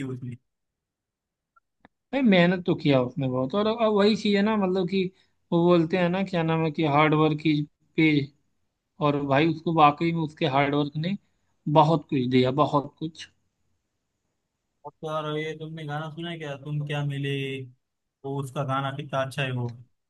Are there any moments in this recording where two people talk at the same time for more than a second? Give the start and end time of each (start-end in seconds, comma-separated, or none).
none